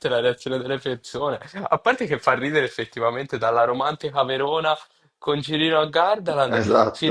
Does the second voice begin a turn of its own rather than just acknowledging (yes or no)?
no